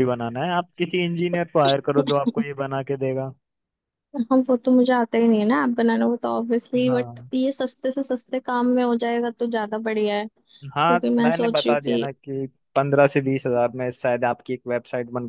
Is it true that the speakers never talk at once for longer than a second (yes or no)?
no